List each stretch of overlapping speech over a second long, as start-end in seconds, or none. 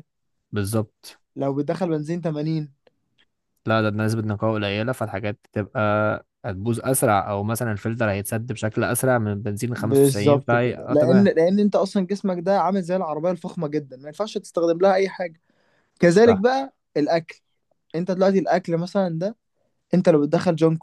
9.8-11.3